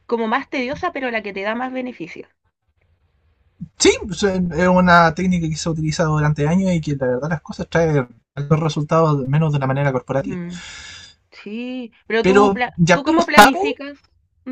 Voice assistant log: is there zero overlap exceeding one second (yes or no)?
no